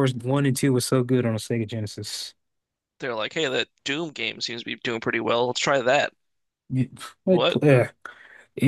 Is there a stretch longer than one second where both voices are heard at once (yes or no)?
no